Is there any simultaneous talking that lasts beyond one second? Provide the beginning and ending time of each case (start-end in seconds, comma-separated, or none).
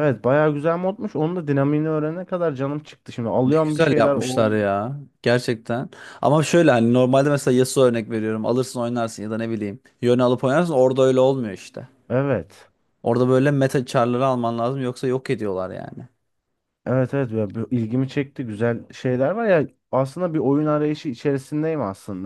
3.5-4.7